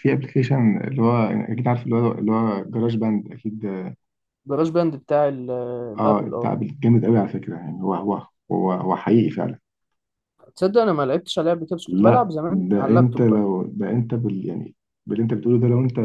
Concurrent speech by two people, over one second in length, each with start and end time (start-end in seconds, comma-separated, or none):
11.9-13.4